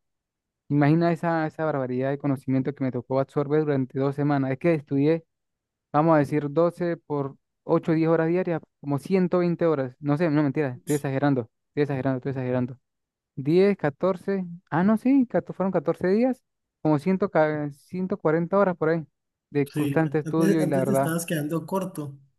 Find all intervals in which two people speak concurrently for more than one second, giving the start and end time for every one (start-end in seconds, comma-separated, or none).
19.7-21.1